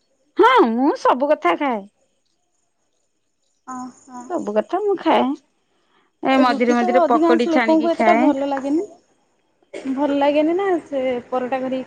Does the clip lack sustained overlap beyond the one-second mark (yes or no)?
no